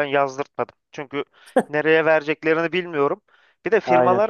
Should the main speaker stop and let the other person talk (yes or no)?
no